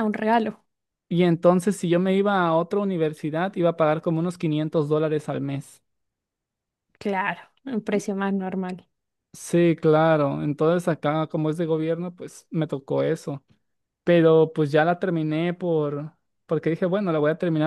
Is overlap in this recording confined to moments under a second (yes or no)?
yes